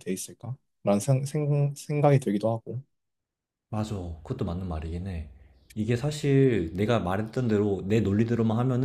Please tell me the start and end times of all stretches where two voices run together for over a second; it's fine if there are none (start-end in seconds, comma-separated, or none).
none